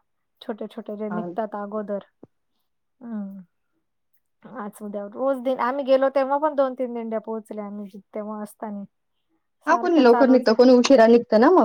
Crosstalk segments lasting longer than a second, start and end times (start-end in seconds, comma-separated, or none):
none